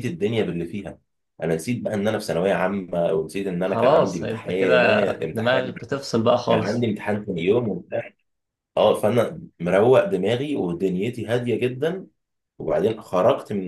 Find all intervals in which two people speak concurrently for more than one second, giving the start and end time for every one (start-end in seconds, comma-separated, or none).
3.6-5.7